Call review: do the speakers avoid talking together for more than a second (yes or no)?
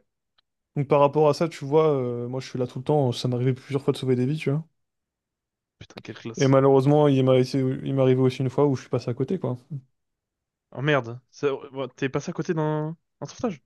yes